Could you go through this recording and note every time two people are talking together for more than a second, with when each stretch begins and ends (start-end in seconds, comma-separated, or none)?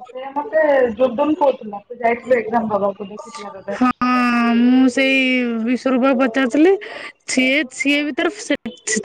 none